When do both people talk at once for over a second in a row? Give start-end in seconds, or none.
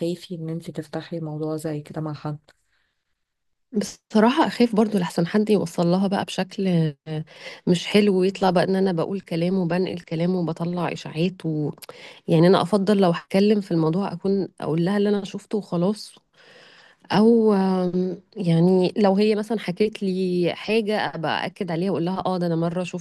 none